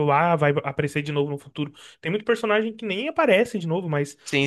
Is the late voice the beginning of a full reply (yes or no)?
no